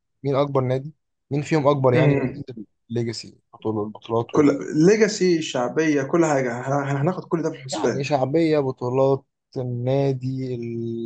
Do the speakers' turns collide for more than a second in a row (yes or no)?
no